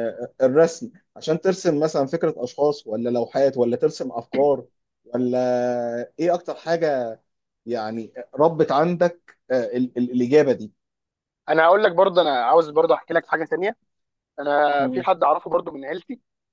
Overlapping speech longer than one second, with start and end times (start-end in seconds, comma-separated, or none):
none